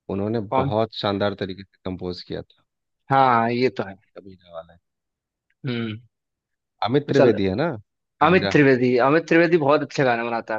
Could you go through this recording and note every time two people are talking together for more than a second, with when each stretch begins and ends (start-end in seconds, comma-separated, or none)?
none